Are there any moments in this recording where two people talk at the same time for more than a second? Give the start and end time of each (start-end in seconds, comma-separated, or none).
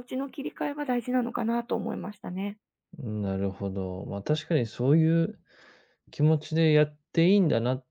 none